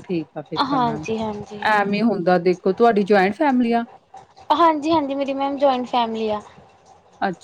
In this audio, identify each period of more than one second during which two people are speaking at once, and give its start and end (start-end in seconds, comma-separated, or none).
none